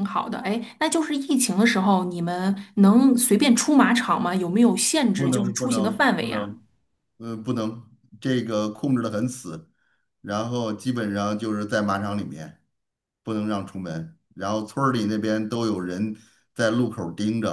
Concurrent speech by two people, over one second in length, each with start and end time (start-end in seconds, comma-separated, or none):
5.2-6.5